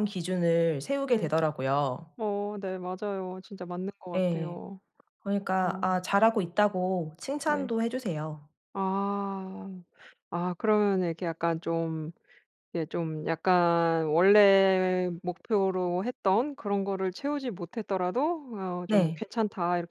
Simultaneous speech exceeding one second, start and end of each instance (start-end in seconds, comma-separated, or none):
none